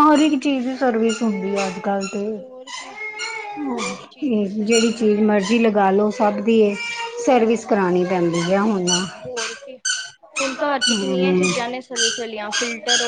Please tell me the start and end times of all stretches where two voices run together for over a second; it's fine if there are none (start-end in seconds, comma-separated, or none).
none